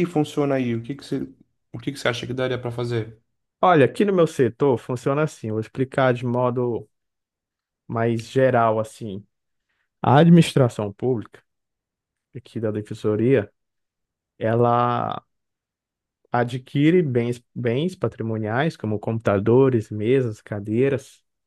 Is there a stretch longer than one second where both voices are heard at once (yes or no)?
no